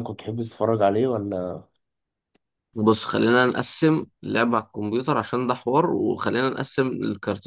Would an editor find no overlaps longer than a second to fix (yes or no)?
yes